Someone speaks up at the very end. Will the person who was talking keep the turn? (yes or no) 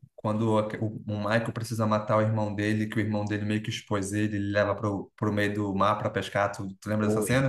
no